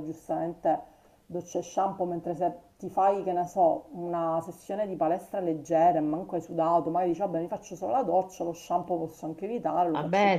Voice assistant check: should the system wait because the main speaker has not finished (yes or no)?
no